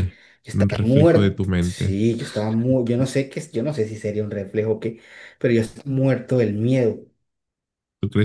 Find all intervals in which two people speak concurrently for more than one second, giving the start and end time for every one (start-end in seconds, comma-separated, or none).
0.5-2.0